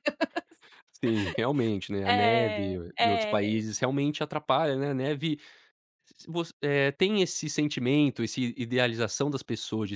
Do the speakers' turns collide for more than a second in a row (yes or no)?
yes